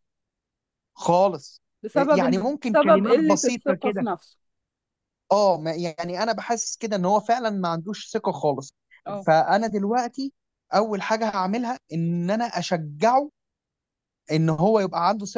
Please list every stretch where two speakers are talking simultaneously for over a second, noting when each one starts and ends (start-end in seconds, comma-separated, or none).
1.8-4.1